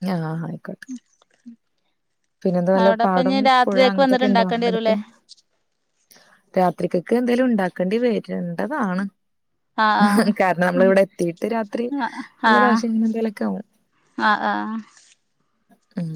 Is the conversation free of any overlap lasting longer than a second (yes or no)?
no